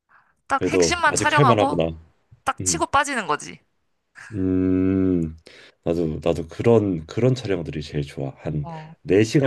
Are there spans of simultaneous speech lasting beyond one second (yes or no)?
yes